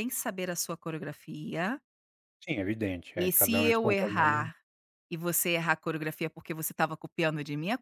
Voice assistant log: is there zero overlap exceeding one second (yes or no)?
no